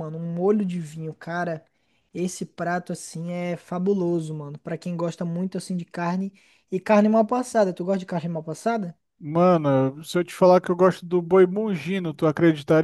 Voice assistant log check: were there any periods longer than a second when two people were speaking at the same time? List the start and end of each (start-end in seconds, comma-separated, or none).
none